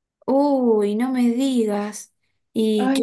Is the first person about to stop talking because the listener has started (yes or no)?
yes